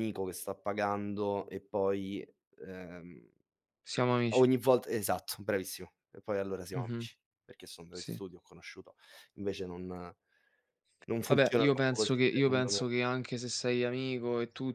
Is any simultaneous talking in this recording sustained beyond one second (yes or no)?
yes